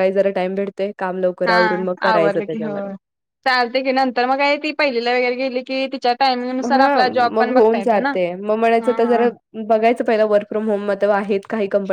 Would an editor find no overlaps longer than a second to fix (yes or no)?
yes